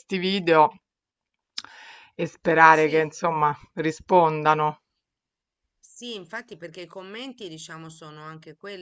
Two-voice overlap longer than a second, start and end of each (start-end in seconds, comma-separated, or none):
none